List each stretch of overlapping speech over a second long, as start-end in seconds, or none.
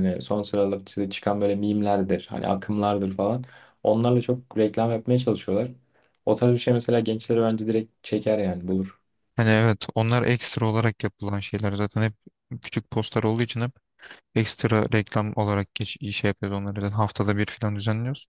none